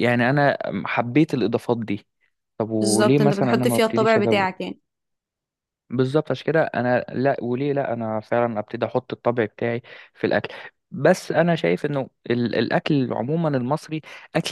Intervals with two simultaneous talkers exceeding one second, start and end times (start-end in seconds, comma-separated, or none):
2.8-4.5